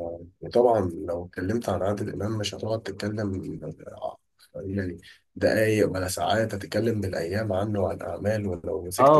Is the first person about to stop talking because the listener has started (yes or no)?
yes